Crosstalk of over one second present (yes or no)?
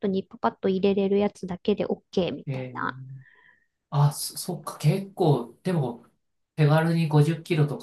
no